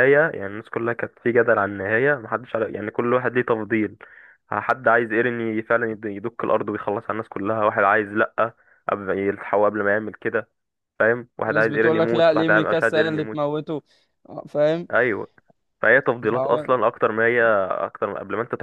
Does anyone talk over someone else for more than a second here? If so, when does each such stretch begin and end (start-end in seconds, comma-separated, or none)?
11.4-13.4